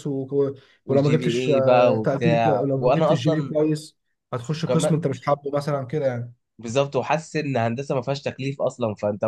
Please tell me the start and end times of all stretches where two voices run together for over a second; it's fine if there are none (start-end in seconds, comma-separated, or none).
0.8-3.5